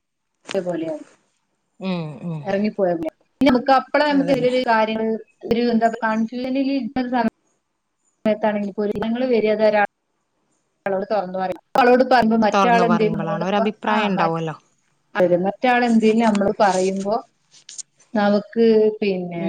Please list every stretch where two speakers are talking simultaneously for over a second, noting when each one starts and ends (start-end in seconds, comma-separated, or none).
12.5-14.6